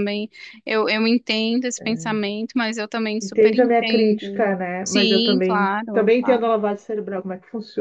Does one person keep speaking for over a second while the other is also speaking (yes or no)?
yes